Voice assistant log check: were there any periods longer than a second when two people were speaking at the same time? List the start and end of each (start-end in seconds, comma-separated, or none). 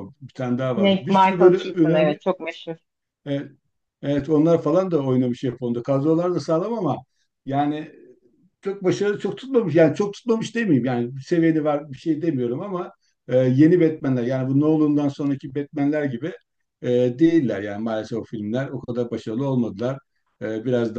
0.7-2.2